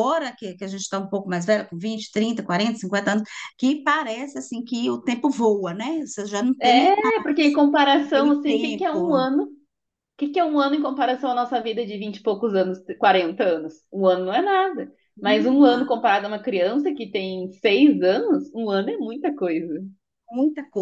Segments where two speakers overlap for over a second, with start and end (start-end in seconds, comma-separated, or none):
8.1-9.2